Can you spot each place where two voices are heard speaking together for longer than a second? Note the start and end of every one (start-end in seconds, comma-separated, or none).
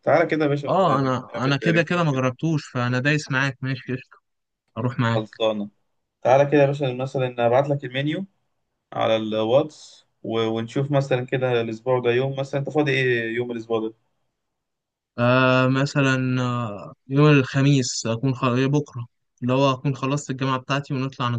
0.7-2.2